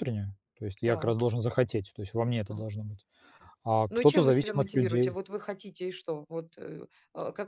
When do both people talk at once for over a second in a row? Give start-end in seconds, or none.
3.9-5.2